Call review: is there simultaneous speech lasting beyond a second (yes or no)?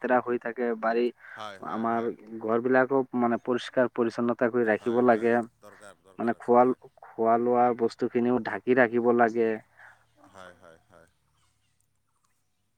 yes